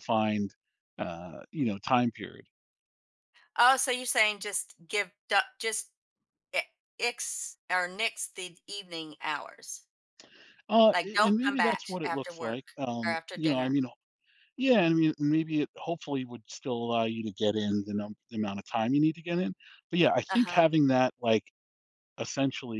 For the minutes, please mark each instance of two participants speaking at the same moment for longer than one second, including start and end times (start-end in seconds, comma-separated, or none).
10.9-13.8